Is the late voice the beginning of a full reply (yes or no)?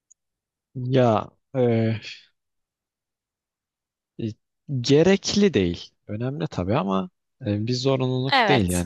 no